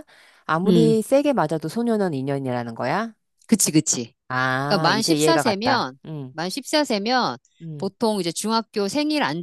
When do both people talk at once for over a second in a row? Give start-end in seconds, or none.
4.7-6.3